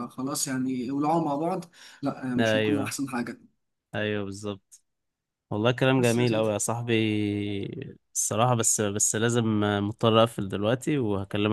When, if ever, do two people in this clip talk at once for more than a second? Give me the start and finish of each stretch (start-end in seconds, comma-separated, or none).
none